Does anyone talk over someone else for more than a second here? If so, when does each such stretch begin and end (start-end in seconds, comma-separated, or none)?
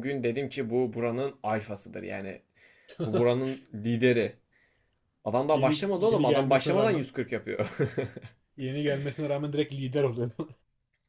5.5-7.1